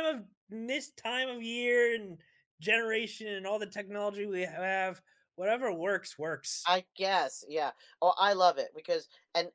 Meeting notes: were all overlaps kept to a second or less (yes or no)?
yes